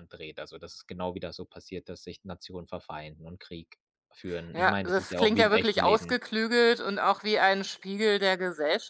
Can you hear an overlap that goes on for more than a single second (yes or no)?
yes